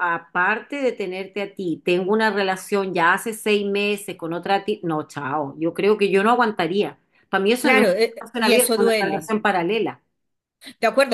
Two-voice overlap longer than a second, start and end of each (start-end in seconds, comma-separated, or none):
7.6-9.3